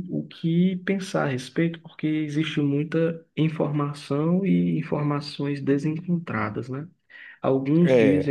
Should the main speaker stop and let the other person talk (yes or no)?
no